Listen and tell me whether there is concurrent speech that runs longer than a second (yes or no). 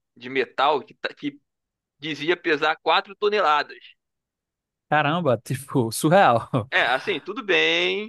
no